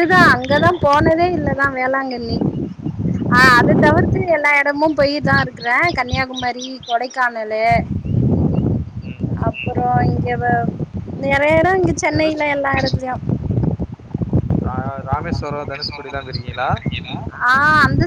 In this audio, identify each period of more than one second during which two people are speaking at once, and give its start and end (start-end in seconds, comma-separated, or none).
none